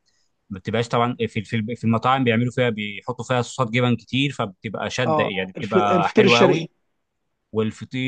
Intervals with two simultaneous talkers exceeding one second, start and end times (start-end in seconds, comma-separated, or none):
5.0-6.7